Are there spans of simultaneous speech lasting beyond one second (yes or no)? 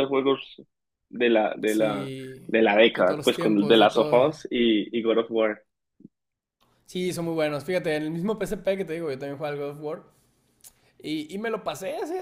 yes